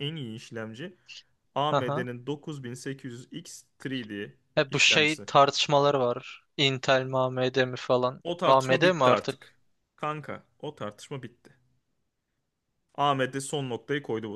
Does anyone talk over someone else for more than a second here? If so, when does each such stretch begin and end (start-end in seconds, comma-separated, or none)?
8.2-9.5